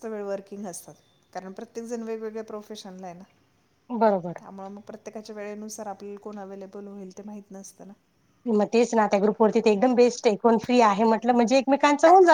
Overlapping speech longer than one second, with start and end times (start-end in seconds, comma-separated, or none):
none